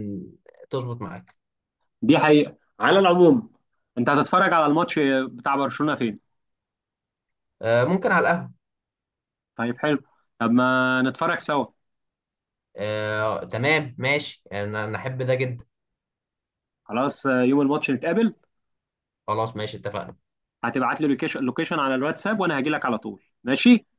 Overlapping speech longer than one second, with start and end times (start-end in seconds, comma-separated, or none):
none